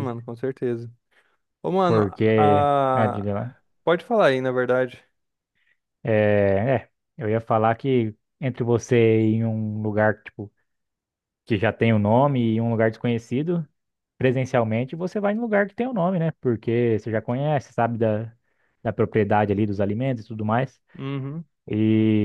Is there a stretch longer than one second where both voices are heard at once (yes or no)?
yes